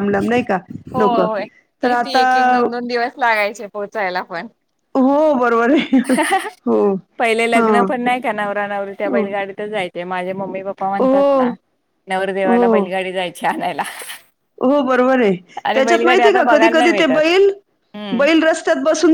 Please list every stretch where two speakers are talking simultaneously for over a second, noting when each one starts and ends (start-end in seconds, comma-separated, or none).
15.7-17.2